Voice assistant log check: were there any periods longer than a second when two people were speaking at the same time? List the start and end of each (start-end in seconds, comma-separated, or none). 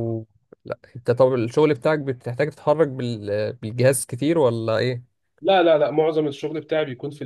none